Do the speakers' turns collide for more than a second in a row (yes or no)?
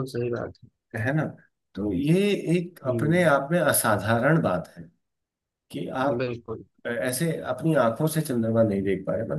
no